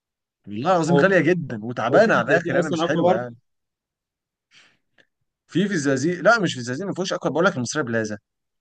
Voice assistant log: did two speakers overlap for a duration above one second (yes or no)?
yes